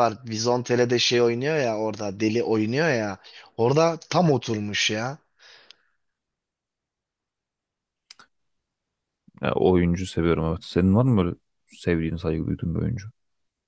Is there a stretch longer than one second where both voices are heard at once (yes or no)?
no